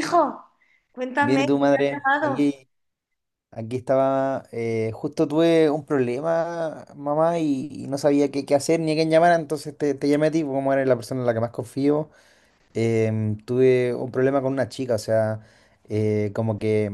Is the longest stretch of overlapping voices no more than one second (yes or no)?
no